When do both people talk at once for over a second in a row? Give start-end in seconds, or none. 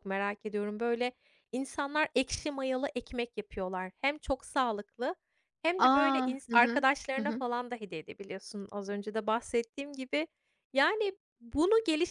5.8-7.4